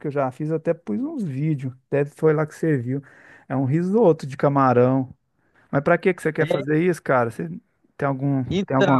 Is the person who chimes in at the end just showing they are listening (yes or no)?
no